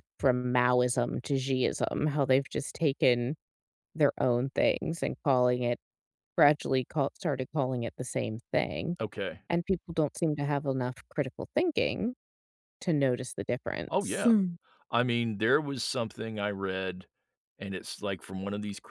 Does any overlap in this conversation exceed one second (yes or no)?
no